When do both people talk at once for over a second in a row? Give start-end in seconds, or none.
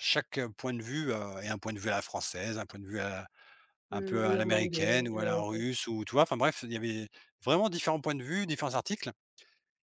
3.9-5.7